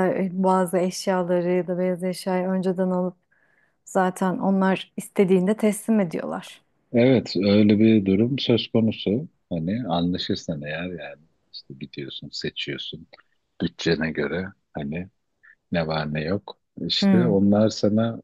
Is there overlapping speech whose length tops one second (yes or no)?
no